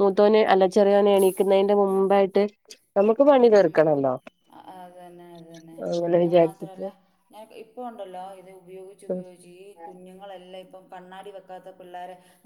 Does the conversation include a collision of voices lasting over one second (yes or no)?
no